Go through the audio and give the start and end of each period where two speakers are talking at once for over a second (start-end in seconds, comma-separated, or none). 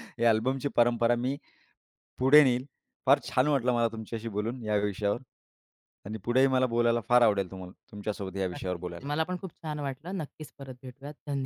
none